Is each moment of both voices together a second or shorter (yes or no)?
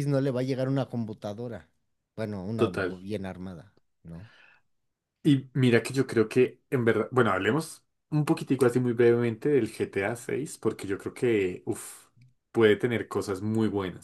yes